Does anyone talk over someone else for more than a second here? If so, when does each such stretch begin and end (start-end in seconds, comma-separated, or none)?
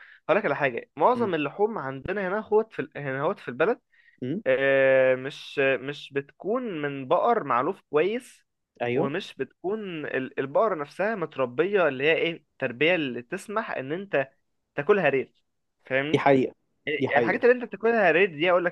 none